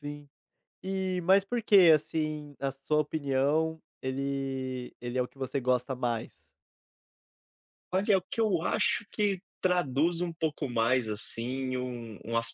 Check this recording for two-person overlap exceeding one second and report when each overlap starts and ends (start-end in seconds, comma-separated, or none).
none